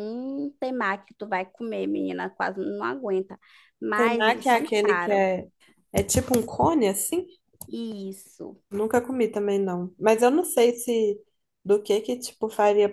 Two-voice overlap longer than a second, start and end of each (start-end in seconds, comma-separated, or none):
3.9-5.2